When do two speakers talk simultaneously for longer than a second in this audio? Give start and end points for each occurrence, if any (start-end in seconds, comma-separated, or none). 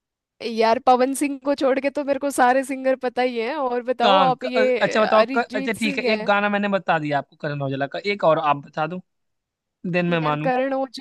4.0-6.3